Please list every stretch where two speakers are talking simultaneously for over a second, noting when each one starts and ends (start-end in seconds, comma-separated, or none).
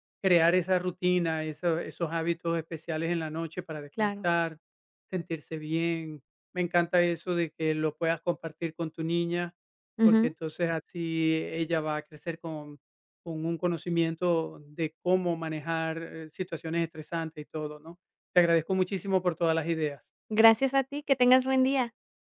none